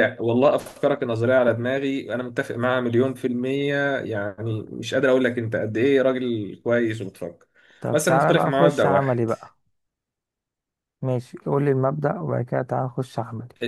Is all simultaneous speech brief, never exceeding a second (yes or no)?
no